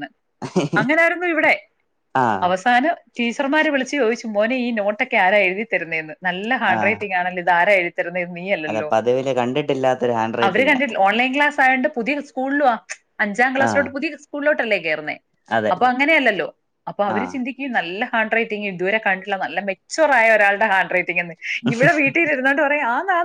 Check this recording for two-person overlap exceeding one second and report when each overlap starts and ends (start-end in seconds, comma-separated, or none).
none